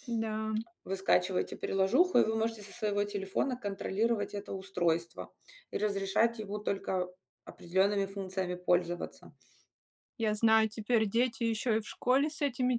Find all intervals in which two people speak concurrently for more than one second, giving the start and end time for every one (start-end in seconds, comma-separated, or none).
none